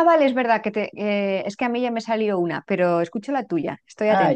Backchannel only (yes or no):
no